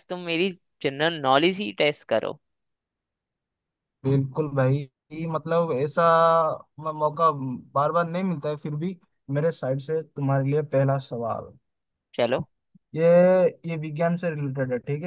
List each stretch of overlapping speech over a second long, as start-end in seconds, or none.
none